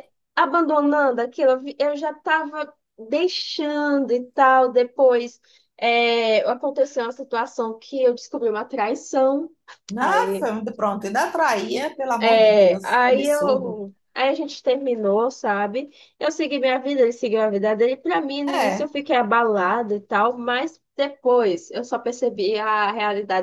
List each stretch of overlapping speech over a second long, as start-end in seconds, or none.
12.2-13.8